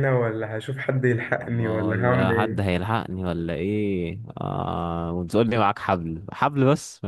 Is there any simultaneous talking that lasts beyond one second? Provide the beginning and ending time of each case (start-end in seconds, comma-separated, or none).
1.4-2.8